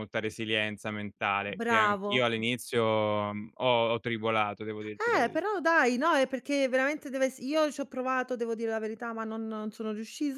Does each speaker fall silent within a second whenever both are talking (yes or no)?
yes